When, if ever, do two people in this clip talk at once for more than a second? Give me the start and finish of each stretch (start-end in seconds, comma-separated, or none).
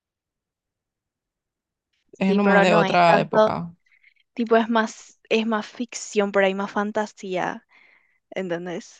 2.3-3.5